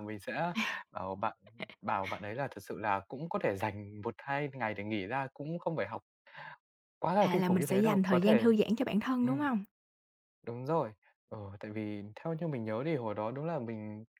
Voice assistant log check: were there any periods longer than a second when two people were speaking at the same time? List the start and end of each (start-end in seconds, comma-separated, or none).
7.2-8.5